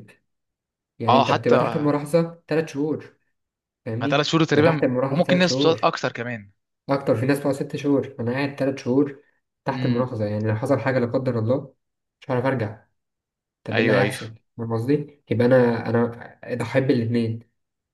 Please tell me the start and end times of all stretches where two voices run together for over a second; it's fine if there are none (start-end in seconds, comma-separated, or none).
4.1-5.9